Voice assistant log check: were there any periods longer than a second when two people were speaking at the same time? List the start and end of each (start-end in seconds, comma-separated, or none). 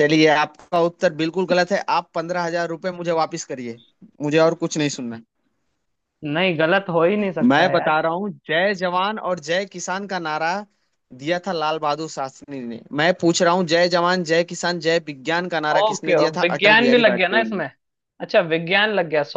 15.8-17.6